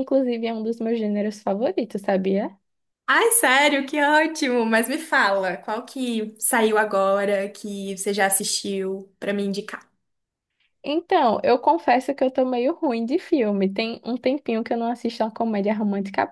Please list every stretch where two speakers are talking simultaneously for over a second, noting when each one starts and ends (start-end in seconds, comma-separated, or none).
none